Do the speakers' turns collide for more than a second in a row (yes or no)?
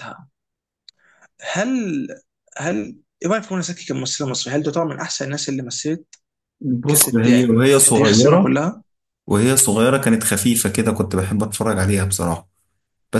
yes